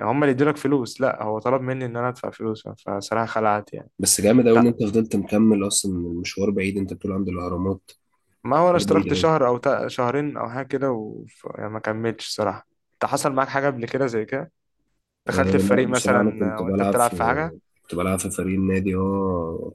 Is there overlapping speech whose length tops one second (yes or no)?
yes